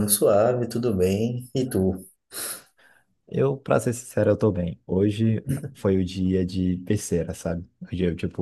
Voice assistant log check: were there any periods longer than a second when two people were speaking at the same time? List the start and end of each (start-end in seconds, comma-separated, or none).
none